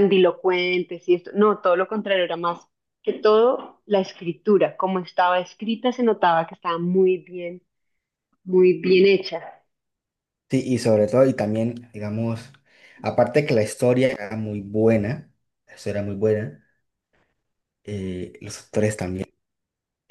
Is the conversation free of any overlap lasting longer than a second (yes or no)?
yes